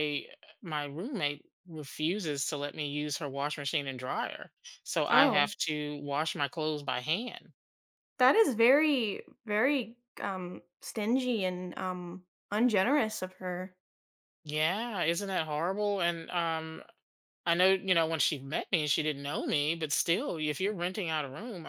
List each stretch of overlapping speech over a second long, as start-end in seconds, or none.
none